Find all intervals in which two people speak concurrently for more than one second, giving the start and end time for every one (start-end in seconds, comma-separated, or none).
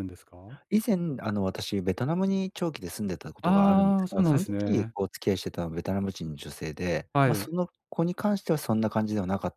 3.4-4.9